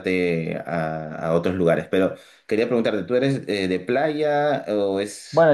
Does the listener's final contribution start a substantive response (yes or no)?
yes